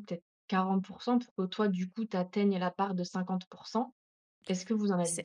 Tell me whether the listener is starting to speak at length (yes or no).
yes